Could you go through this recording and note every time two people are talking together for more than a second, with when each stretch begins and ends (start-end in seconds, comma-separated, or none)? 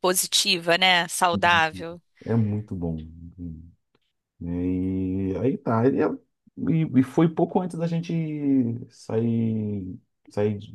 none